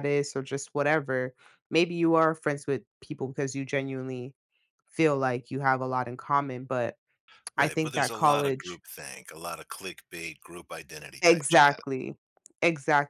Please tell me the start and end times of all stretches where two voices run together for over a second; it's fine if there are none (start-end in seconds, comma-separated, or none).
7.6-8.8